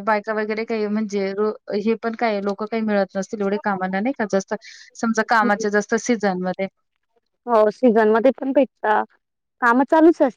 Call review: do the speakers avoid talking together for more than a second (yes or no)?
yes